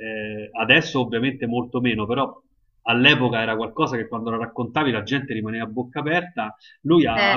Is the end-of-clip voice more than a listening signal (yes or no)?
no